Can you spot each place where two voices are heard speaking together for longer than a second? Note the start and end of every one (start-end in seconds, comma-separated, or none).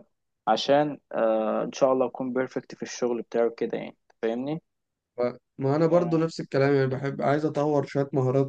none